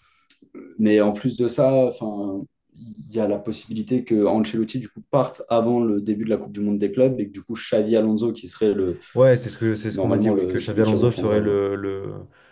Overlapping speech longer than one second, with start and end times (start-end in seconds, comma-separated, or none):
9.9-11.5